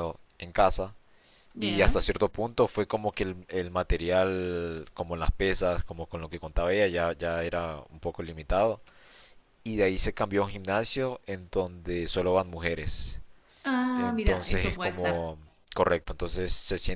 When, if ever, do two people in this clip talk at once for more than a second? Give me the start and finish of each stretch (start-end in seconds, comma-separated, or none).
13.9-15.2